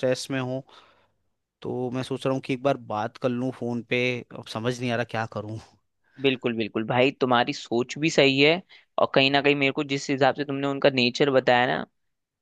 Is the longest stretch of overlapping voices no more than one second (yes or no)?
yes